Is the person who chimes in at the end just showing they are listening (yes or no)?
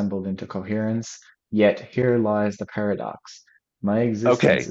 no